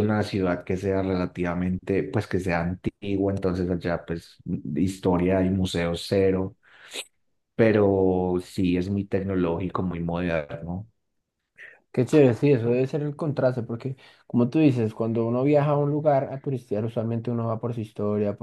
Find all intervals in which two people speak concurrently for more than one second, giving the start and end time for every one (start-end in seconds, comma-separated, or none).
none